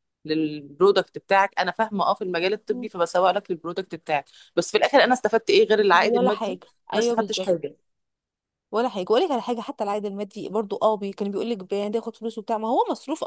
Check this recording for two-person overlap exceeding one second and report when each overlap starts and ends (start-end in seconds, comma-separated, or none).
5.9-7.7